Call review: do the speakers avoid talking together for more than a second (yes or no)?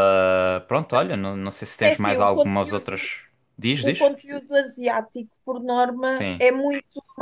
no